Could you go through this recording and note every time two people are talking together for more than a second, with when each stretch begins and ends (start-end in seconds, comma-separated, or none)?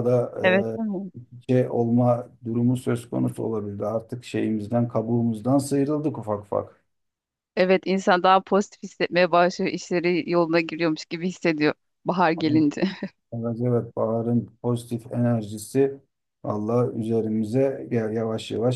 none